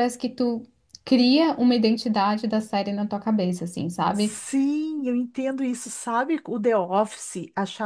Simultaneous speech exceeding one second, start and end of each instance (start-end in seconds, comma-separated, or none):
none